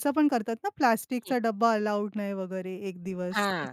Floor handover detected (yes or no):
yes